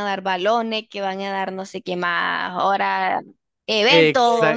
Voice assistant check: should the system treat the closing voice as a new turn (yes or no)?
yes